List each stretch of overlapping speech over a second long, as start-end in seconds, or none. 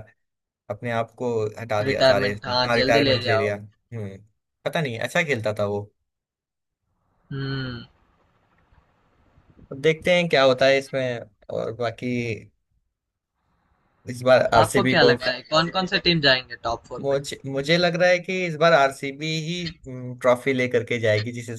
1.9-3.5